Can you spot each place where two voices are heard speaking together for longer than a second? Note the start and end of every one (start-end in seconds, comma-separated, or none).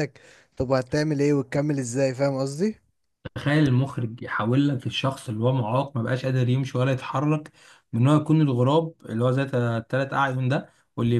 none